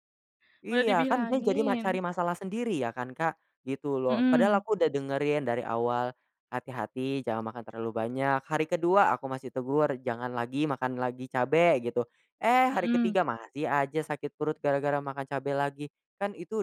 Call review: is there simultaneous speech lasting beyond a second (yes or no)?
yes